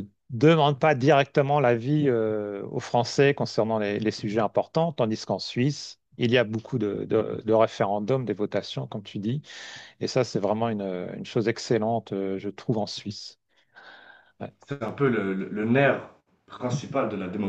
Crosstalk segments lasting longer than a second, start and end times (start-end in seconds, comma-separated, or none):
none